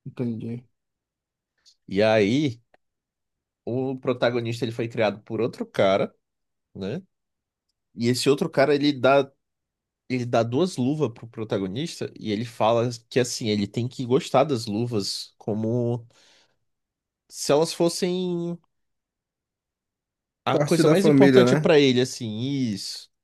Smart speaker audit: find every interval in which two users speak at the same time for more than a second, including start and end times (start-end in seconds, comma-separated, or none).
20.5-21.7